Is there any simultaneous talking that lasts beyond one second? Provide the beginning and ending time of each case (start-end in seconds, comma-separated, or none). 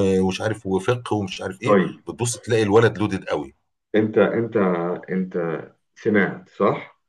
none